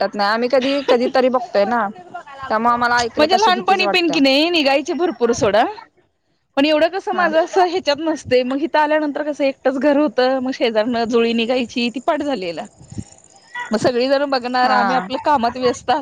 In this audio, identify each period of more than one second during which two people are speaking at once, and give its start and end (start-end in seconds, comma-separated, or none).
2.5-4.2